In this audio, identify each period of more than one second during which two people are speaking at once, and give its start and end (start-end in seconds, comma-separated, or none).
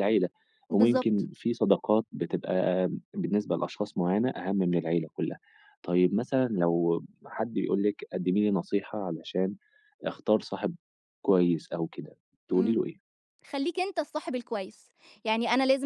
none